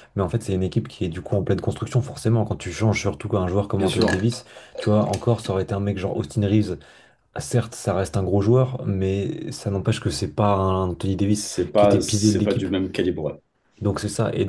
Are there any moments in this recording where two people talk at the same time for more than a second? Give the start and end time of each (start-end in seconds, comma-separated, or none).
11.3-12.7